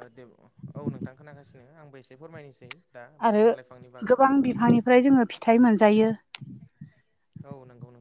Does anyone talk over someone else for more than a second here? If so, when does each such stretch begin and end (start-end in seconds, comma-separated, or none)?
none